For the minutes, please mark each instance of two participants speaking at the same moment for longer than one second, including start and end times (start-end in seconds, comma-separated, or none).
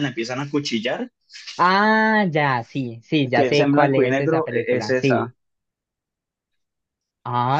3.3-5.3